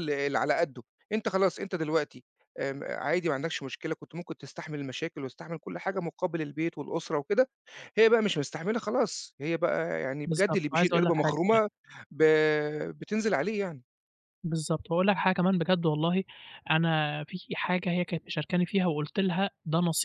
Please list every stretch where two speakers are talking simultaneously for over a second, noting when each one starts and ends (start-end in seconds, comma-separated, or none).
10.2-11.6